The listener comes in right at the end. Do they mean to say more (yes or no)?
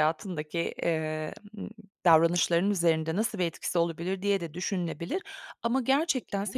no